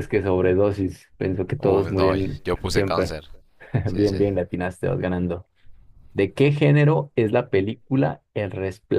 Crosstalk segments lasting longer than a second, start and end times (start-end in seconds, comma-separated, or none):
1.6-3.2